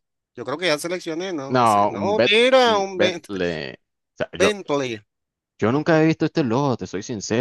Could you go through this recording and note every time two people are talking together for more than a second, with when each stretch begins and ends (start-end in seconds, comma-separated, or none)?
1.5-3.2